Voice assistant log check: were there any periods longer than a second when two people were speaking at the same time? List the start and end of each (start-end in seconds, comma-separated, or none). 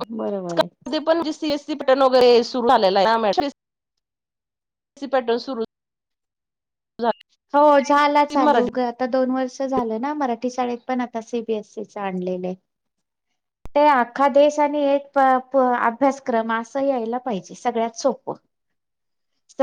none